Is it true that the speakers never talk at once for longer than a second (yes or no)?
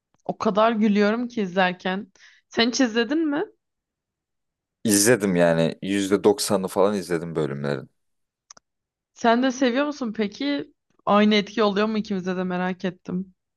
yes